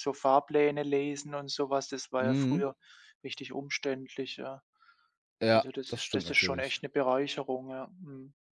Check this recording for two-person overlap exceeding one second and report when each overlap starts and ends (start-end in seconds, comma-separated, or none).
5.5-6.8